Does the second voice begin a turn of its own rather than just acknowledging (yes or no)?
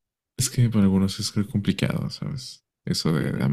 yes